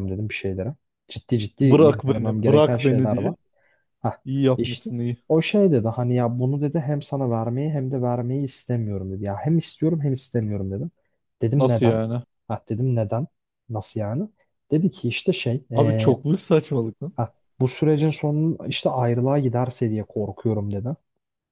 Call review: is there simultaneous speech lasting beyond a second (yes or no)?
yes